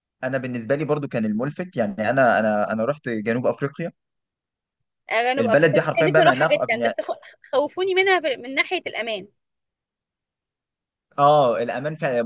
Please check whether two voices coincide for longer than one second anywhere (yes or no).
yes